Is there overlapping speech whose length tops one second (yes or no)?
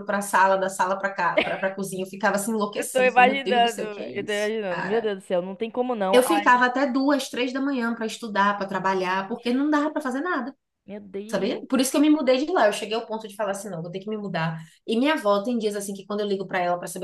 yes